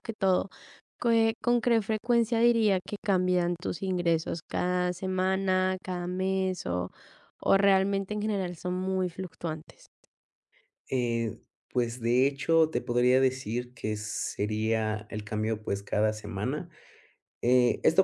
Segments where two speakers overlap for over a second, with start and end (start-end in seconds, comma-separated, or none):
none